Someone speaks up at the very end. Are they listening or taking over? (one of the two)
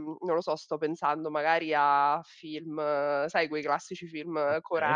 listening